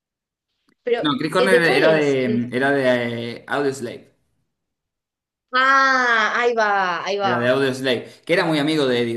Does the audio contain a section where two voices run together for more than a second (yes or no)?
yes